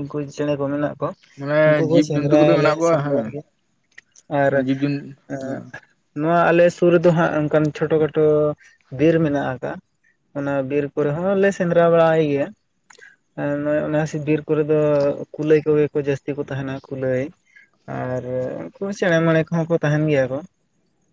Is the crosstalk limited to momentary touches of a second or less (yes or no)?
no